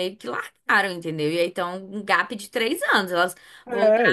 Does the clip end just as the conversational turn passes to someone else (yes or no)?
yes